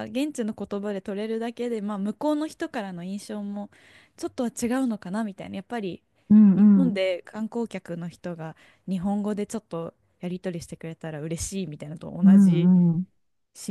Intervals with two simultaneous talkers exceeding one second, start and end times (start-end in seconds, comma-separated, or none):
none